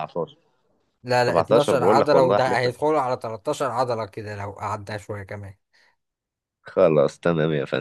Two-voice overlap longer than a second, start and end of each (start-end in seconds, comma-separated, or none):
1.3-2.8